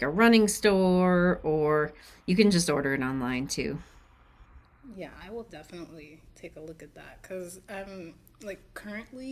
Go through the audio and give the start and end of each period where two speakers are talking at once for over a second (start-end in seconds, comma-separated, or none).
none